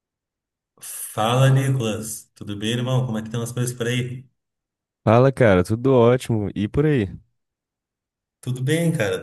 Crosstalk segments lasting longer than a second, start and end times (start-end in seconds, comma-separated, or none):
none